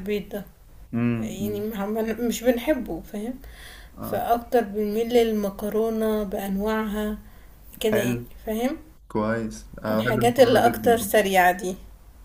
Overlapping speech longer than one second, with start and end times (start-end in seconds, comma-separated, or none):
9.9-11.1